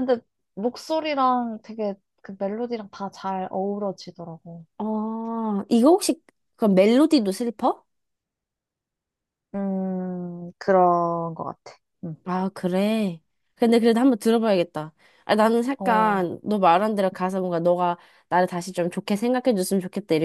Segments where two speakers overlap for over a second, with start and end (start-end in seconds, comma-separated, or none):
none